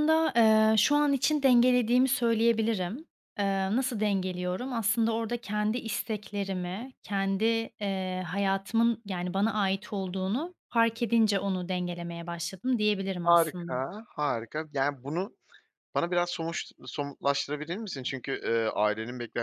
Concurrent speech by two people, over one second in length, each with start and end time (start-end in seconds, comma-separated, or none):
none